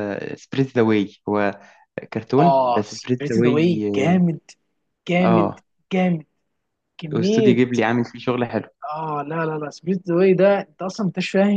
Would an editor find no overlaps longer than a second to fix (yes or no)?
no